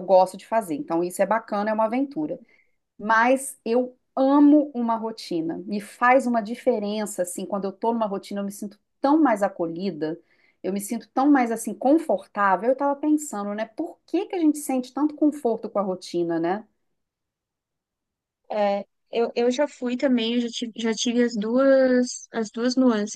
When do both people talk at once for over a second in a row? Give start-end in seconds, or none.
none